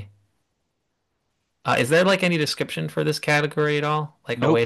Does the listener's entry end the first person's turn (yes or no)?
yes